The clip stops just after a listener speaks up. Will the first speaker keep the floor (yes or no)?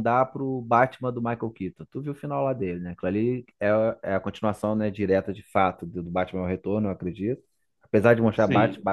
yes